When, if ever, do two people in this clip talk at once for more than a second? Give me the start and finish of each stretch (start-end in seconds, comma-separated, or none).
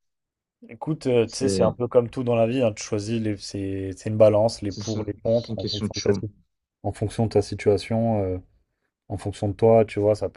4.7-6.2